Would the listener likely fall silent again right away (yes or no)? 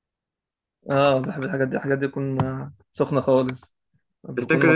no